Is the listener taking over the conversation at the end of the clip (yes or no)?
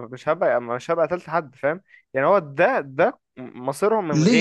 yes